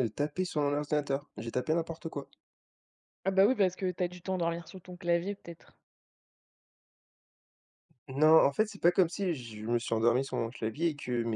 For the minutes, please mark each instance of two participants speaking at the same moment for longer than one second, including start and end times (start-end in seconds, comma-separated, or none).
none